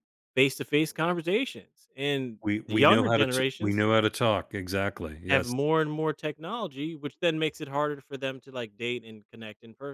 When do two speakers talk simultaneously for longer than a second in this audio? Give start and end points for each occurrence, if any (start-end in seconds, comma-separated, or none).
2.4-3.9